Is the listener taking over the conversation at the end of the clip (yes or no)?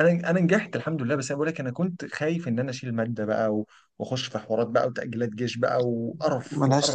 yes